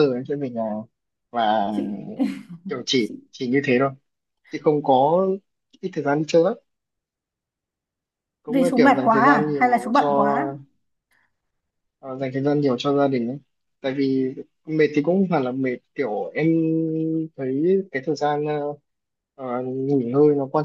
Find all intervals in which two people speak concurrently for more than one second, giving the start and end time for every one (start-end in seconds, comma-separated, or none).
8.4-10.1